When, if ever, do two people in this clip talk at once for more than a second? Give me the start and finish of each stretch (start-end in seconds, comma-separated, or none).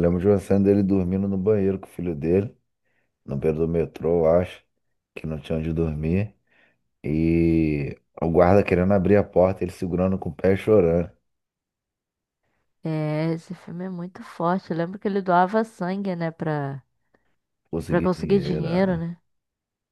17.9-19.1